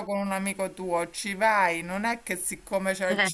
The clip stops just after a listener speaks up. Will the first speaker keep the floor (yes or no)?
yes